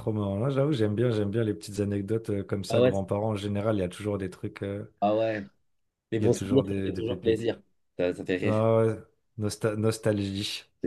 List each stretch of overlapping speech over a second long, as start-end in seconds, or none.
6.2-7.5